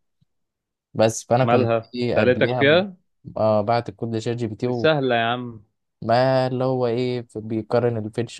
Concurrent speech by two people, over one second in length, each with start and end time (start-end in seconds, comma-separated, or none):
1.4-2.9